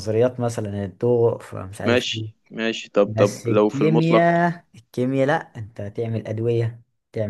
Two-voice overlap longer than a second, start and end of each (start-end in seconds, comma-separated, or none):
3.0-4.3